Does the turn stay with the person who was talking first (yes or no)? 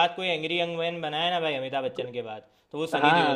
no